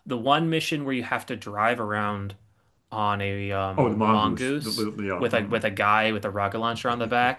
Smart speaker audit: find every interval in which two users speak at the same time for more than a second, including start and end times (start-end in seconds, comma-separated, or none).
3.8-5.6